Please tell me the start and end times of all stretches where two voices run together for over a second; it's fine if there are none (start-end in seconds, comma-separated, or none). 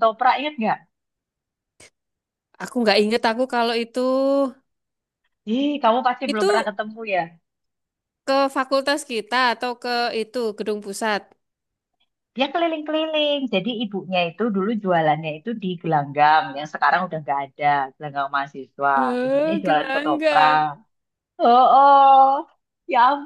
19.0-20.6